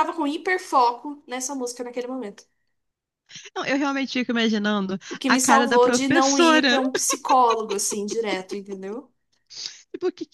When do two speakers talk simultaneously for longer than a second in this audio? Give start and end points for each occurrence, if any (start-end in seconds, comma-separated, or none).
5.1-6.8